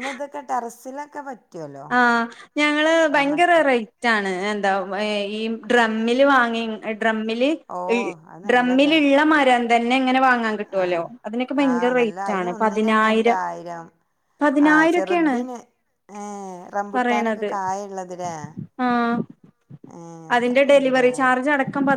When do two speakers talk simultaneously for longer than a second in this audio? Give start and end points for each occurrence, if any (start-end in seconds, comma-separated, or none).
11.7-13.4